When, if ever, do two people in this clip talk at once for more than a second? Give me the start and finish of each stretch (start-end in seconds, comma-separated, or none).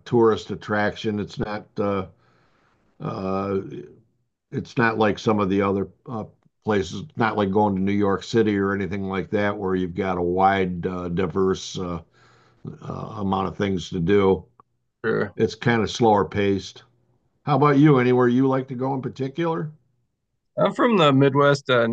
none